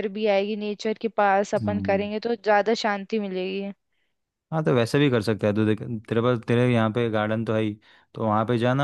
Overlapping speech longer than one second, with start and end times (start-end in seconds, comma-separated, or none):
none